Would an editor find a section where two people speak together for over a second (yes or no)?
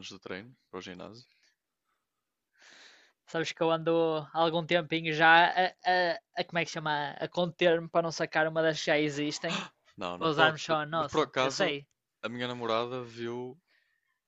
yes